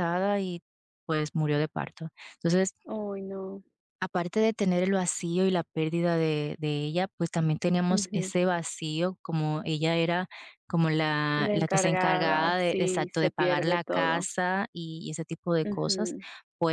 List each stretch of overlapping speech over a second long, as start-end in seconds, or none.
11.4-14.3